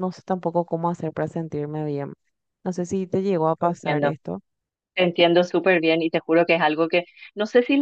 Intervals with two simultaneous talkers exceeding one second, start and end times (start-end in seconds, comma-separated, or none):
none